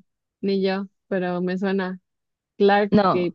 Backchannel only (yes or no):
no